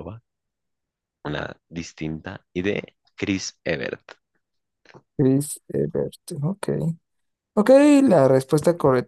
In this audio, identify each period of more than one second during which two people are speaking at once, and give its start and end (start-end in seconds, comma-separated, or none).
none